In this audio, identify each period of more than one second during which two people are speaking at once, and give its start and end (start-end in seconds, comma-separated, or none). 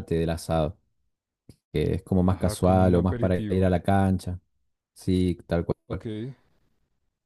2.3-3.8